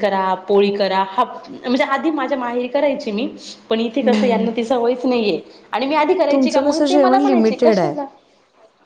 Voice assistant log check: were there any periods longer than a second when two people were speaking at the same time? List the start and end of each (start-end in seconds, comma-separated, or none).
6.3-8.0